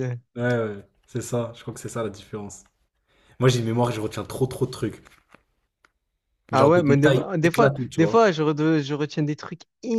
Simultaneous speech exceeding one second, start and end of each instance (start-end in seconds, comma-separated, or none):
6.5-8.2